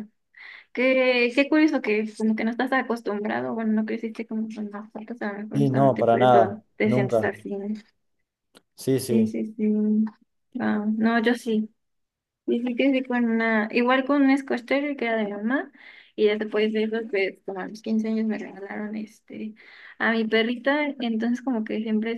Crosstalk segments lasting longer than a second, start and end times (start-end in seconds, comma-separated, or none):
5.5-7.3